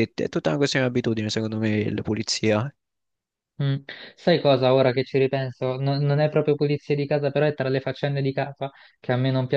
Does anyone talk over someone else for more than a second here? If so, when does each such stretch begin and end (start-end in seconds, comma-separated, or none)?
none